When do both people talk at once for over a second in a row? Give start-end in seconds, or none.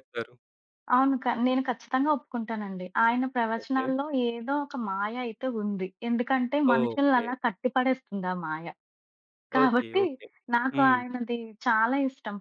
none